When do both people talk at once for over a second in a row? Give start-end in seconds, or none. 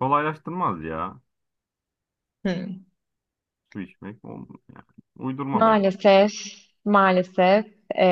none